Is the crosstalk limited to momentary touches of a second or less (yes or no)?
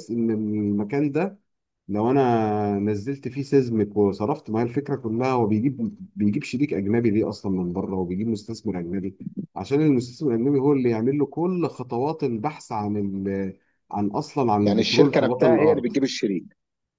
no